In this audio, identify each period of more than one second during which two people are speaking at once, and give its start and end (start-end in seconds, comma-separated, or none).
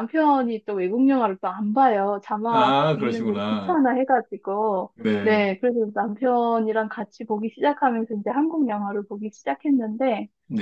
2.5-3.8